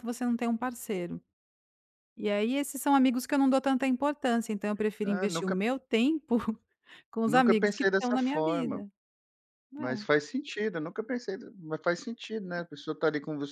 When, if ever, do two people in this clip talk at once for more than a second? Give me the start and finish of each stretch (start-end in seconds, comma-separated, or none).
7.2-8.8